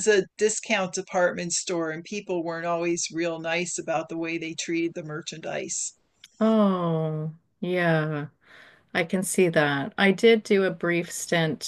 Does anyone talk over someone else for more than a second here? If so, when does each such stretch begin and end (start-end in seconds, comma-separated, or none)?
none